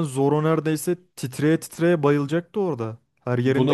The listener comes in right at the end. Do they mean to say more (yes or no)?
yes